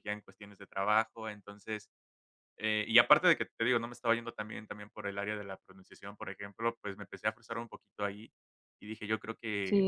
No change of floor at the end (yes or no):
no